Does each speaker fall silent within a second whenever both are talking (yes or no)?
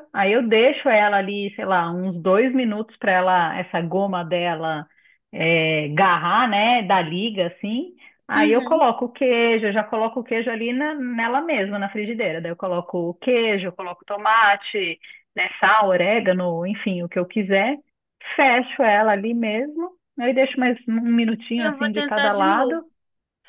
no